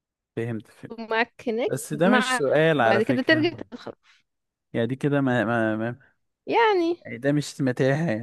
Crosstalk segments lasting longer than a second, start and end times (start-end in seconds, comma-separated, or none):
1.7-3.5